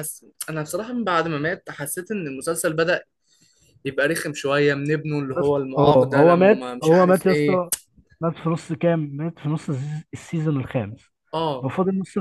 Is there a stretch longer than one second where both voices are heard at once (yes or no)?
yes